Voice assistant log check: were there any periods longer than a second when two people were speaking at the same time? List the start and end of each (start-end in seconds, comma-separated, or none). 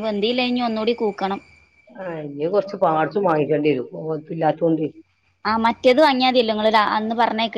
none